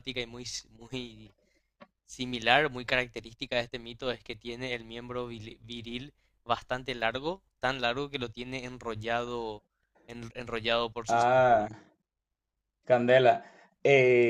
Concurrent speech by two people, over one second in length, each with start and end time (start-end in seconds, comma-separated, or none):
none